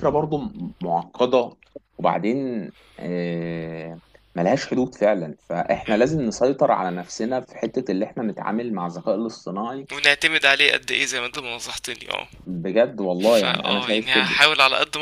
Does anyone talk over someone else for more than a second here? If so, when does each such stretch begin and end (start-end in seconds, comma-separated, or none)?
13.2-14.4